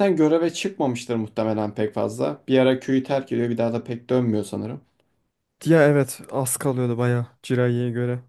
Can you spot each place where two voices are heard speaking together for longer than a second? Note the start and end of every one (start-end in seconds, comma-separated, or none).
none